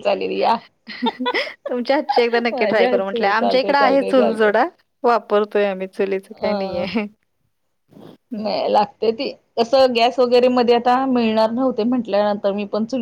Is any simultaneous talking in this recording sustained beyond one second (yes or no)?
yes